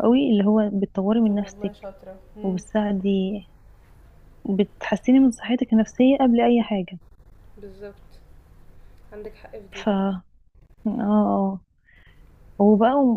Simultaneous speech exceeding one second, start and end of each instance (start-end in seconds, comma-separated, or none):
none